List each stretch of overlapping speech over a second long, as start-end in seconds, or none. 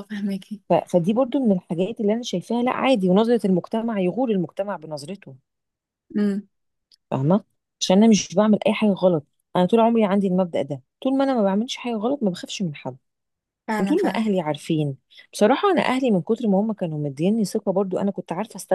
none